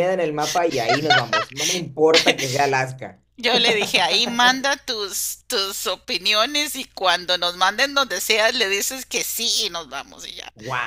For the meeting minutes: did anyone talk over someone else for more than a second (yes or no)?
no